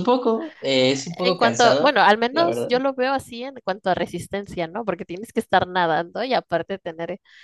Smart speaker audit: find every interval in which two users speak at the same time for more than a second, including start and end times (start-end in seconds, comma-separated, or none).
1.2-2.7